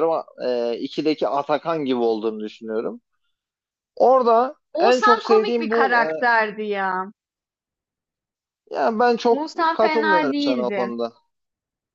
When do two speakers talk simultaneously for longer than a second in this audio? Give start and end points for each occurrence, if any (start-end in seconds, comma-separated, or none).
4.7-6.0, 9.3-10.9